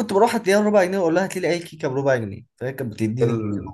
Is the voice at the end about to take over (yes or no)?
yes